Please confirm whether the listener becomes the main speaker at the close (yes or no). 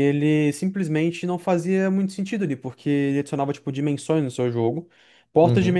no